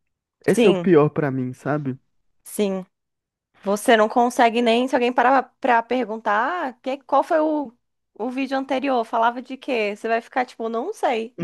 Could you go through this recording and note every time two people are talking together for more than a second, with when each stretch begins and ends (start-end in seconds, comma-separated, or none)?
none